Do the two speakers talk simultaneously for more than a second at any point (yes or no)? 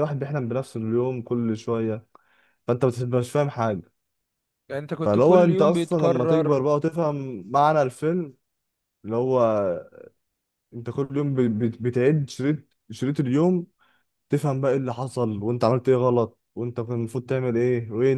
yes